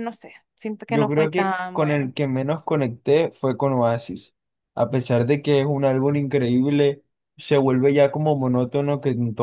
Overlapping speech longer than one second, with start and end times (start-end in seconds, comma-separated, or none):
0.9-2.1